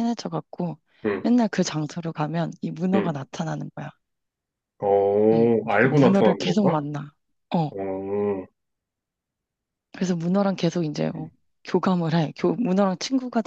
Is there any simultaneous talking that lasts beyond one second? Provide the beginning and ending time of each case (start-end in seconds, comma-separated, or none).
5.3-6.8